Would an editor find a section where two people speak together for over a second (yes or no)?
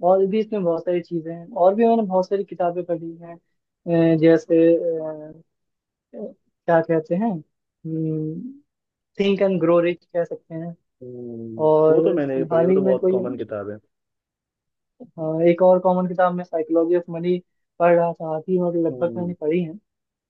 yes